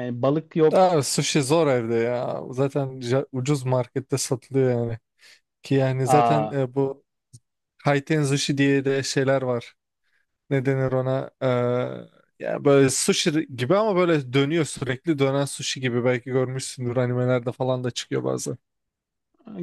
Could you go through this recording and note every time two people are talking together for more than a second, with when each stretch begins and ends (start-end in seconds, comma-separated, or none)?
none